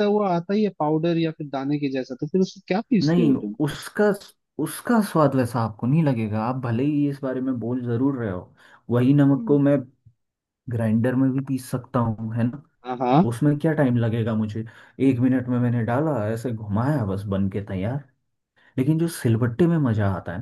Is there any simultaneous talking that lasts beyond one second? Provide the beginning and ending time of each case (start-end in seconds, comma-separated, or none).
none